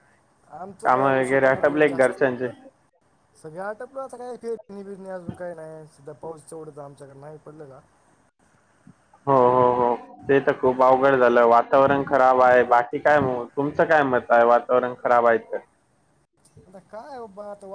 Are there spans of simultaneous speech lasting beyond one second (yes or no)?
yes